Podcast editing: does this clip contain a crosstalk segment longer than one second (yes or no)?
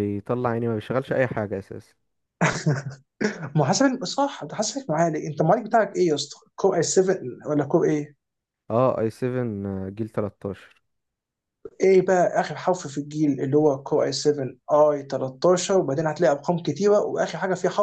no